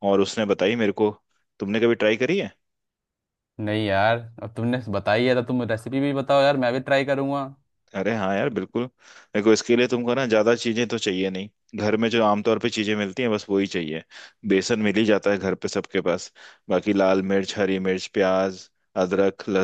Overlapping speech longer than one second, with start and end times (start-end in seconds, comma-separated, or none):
none